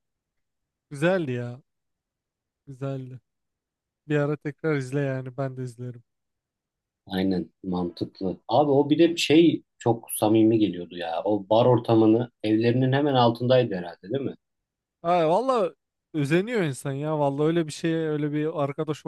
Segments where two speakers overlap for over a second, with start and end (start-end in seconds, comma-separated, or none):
none